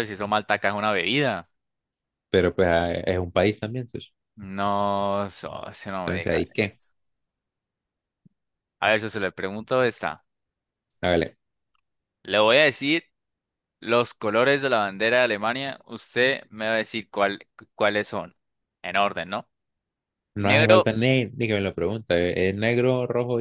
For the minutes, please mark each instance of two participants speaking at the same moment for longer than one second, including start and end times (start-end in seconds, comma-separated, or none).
none